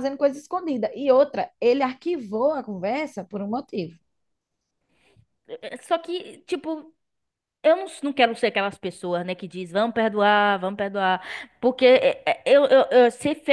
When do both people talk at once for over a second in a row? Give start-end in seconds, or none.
none